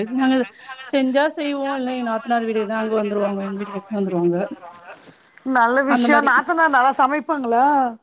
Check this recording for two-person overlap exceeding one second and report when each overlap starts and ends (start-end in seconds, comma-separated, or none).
none